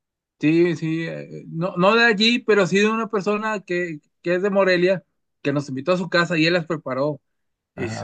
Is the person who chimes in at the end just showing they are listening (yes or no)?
yes